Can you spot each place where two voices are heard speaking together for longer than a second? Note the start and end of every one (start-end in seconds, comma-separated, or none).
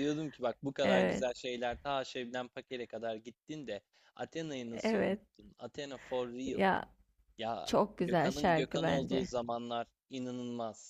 7.6-9.3